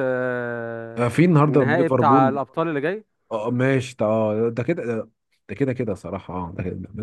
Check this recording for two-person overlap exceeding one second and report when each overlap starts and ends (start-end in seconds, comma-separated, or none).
1.0-2.4